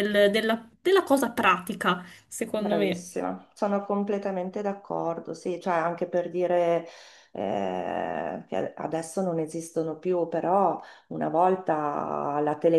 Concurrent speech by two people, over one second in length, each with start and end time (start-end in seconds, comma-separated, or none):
none